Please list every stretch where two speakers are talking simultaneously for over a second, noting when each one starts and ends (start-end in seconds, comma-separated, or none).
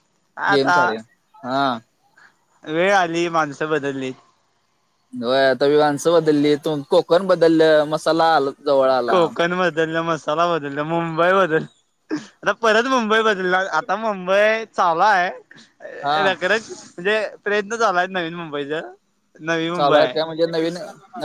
none